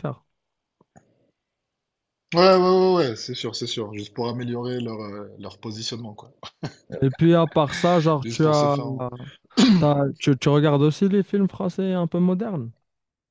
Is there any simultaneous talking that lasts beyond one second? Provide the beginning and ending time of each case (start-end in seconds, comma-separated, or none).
none